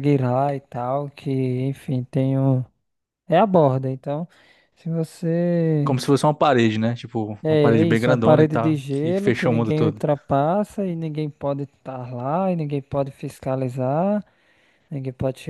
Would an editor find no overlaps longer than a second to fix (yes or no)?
no